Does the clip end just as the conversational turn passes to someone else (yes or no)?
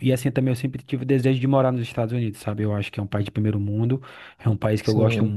no